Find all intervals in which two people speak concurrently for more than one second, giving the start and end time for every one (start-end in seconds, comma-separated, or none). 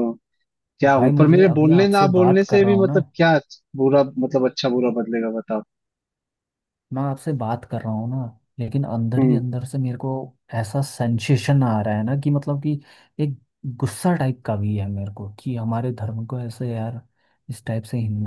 0.9-3.0